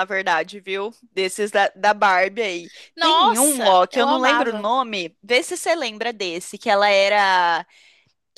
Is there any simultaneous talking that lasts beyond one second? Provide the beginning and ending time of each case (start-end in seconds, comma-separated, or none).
3.0-4.7